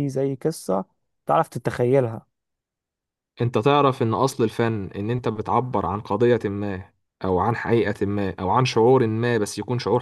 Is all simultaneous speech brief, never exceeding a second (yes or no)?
yes